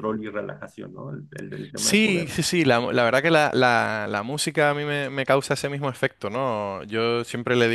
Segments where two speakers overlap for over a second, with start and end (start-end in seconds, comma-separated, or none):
none